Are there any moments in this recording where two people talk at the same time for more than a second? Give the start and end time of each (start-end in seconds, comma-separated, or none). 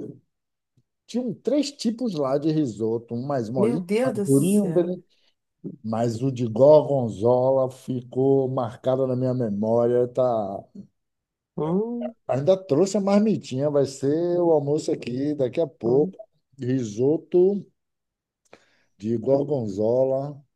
3.5-5.0